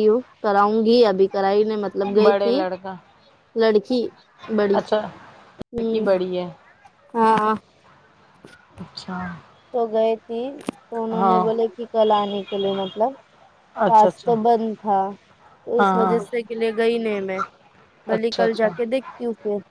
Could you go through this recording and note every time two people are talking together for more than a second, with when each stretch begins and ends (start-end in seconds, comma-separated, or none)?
none